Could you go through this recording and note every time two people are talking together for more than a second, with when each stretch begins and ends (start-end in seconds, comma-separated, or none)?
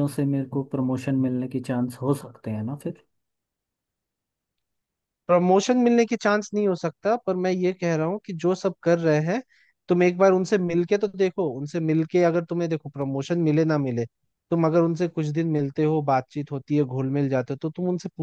none